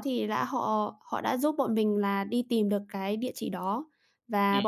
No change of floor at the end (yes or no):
yes